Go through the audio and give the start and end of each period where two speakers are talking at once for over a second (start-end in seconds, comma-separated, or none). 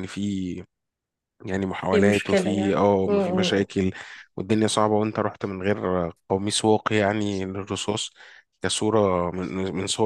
1.9-3.7